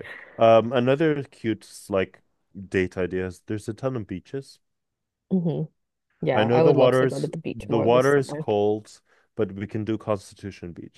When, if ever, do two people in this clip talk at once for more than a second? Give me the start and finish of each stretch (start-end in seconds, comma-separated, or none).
6.3-8.4